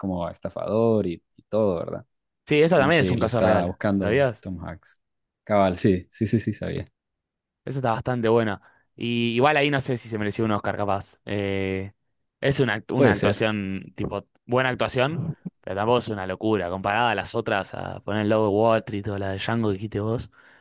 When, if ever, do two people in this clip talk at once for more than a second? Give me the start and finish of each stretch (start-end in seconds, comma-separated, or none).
2.7-4.5